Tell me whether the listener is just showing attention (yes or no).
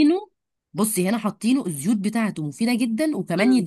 no